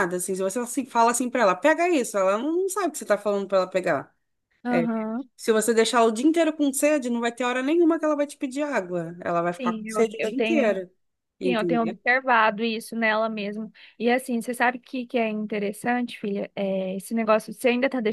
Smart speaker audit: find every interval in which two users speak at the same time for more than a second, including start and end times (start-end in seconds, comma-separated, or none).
9.6-10.8